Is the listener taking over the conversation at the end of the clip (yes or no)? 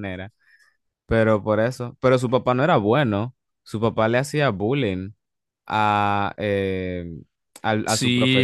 yes